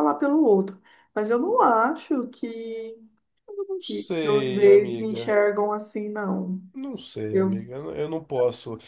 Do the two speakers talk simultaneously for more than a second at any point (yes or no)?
yes